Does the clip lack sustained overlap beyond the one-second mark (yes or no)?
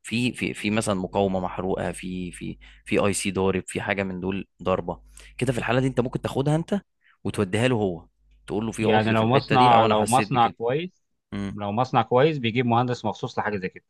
no